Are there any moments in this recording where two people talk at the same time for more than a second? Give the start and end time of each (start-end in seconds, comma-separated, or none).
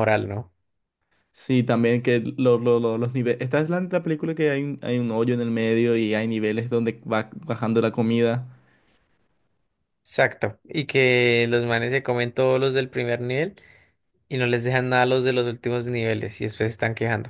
none